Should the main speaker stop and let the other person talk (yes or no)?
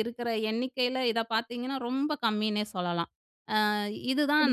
no